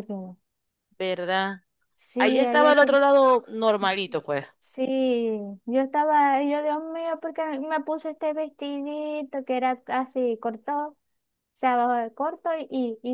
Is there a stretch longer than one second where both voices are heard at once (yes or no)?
no